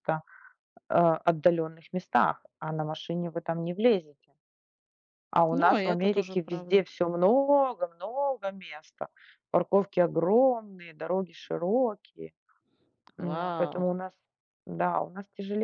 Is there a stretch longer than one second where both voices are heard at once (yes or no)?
yes